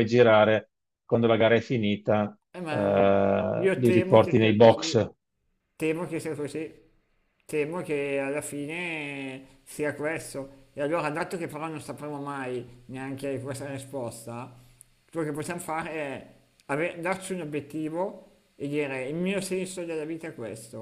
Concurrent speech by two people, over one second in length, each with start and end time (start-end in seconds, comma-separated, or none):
3.6-5.1